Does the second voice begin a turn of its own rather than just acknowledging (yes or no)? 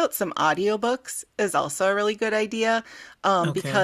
no